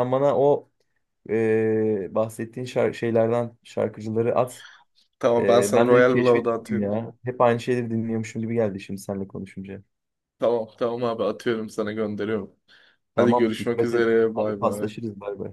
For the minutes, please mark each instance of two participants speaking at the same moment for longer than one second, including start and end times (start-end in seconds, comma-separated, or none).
5.4-6.9, 13.2-14.9